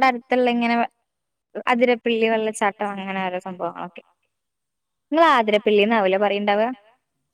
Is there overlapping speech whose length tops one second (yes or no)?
yes